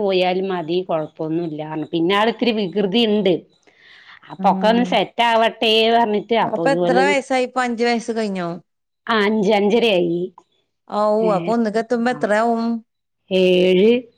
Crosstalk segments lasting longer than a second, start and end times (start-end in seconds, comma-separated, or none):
none